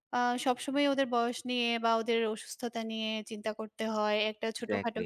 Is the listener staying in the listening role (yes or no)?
yes